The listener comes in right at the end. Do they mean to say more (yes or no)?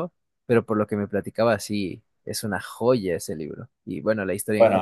yes